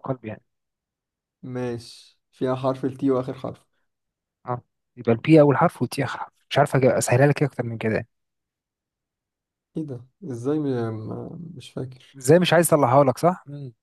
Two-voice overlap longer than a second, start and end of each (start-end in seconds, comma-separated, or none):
none